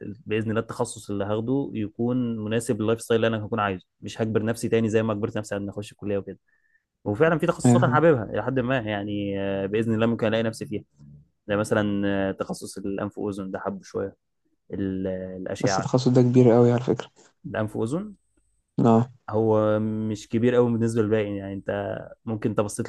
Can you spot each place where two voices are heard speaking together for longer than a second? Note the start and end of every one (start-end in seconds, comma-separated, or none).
none